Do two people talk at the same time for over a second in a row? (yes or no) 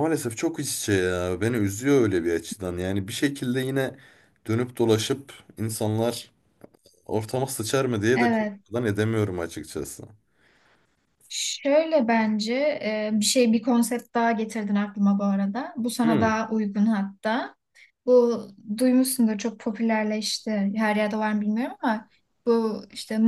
no